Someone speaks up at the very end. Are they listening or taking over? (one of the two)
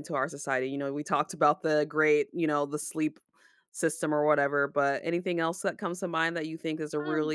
taking over